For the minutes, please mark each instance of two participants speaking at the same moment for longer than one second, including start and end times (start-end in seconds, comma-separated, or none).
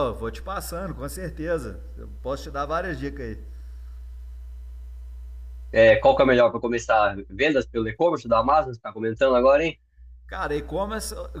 none